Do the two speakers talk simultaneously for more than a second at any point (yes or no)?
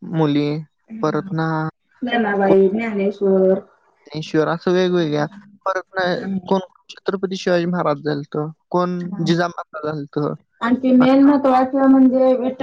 no